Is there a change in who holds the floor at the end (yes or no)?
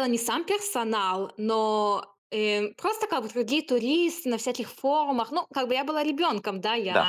yes